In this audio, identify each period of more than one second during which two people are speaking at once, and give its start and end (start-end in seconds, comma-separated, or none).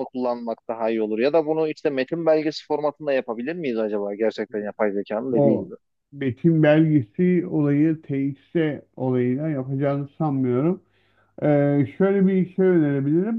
none